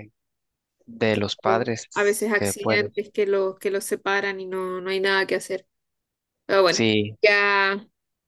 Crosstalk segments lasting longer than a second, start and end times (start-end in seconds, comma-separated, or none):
1.4-2.9